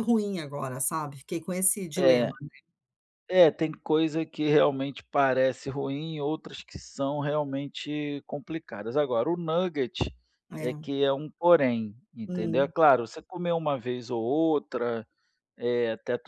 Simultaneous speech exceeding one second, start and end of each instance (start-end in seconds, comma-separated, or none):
none